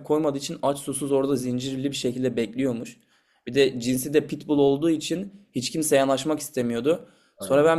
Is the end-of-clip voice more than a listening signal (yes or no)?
no